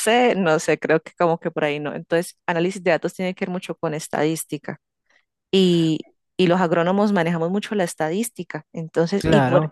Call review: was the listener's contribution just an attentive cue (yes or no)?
yes